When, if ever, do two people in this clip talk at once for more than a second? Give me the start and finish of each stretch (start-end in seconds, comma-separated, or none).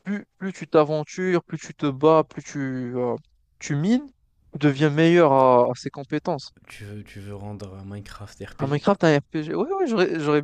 none